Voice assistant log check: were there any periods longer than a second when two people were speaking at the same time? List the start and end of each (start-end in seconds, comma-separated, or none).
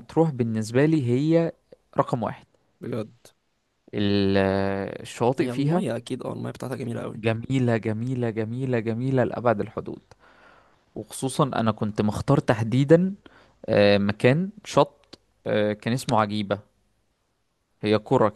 none